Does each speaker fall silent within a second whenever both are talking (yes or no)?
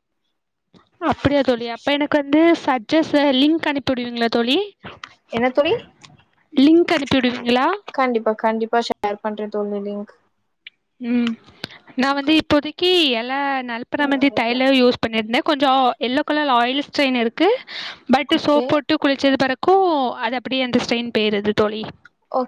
yes